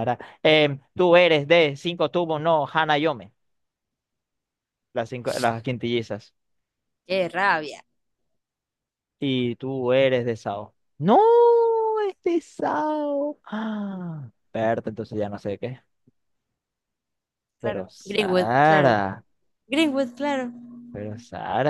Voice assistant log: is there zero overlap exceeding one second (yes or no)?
no